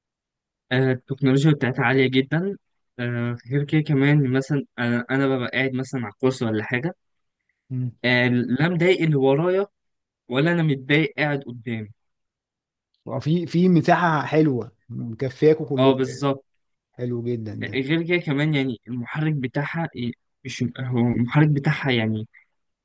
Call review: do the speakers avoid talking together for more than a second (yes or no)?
yes